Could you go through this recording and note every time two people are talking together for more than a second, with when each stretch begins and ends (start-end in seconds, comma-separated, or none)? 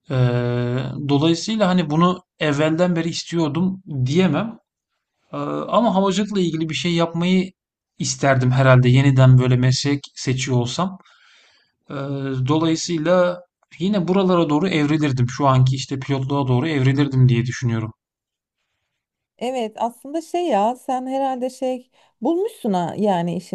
none